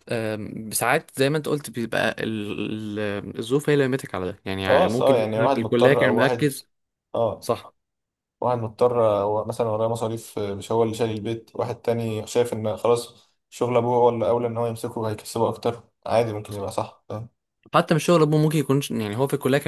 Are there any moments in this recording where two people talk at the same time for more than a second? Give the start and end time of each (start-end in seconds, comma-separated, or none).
4.7-6.5